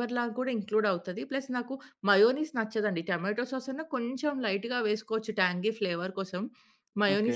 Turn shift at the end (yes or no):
no